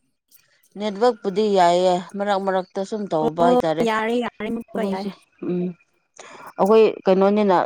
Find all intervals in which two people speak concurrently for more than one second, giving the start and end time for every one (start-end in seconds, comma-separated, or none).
3.2-5.1